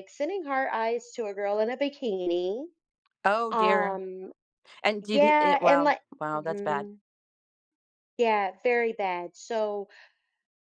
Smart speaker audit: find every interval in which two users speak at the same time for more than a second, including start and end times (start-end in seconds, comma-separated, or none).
5.0-6.9